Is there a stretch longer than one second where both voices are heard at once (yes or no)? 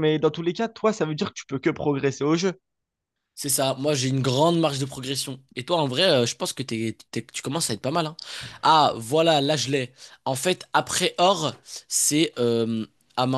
no